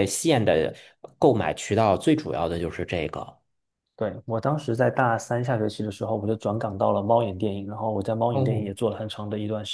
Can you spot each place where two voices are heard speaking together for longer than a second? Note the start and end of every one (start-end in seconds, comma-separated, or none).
none